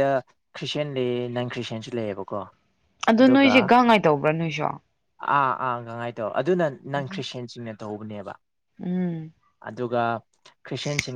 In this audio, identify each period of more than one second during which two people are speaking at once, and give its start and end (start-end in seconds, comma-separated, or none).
none